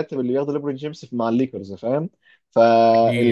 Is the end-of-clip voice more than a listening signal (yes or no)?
no